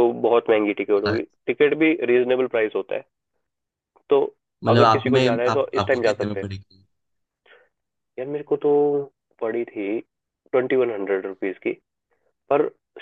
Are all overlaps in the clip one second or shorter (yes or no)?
no